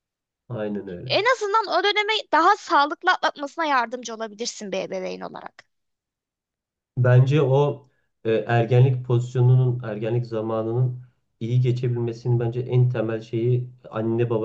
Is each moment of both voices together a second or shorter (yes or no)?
yes